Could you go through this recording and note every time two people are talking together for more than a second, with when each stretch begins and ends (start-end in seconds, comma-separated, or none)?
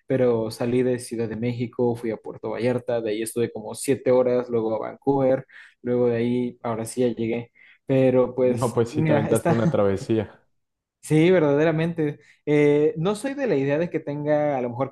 8.5-9.8